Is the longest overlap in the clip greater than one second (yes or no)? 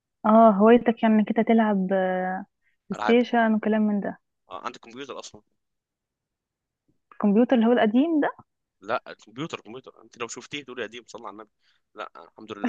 no